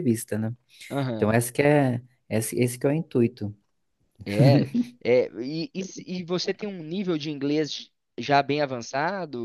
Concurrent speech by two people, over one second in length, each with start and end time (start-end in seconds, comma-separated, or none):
none